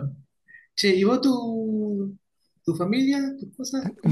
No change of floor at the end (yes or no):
no